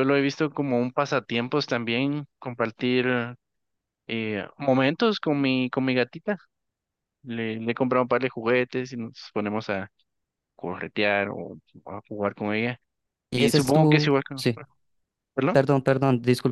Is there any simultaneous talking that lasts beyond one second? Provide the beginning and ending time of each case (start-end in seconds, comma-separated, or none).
13.3-14.6